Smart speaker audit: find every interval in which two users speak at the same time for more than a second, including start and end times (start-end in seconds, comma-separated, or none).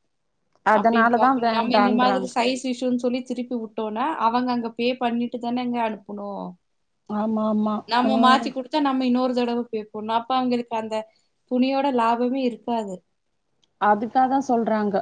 0.8-2.3